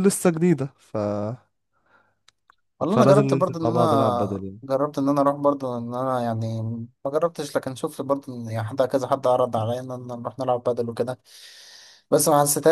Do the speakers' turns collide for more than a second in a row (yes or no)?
yes